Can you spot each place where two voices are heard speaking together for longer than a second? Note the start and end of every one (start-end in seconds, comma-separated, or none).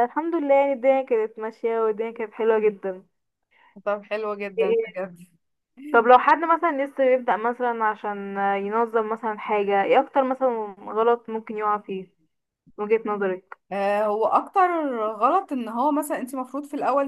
none